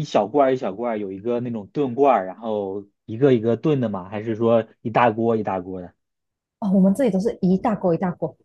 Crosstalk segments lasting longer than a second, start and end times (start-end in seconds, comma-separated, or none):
none